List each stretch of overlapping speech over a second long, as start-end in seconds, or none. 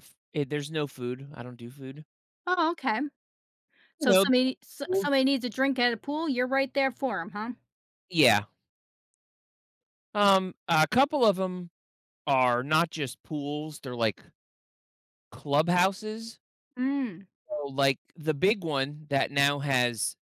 none